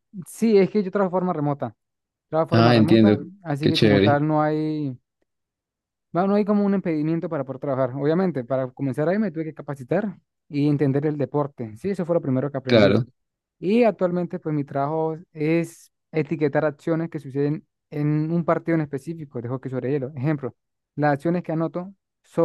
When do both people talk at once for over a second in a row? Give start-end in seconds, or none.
2.5-4.2